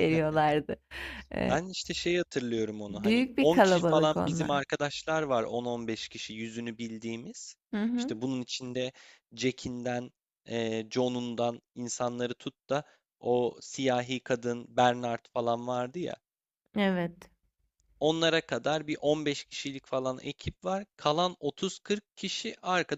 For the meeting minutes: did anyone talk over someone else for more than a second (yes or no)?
yes